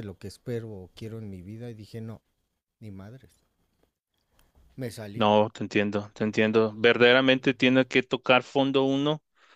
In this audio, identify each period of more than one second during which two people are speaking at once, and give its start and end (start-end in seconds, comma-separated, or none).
none